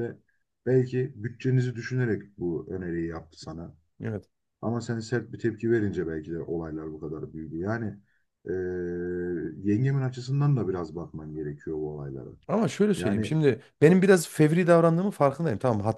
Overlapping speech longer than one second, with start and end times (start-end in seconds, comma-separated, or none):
none